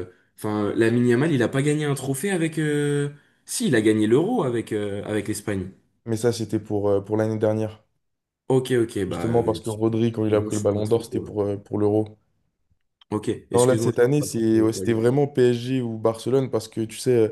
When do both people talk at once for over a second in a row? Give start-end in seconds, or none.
9.1-11.3, 13.5-15.0